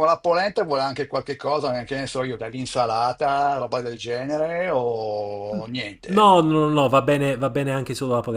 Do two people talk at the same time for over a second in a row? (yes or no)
no